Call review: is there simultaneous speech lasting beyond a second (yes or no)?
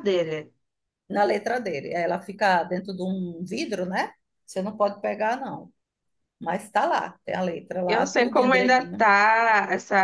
yes